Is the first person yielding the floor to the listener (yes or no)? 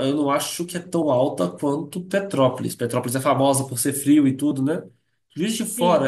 no